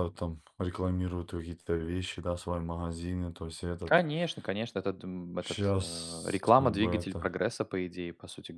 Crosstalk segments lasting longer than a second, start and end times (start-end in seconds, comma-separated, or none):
5.4-7.3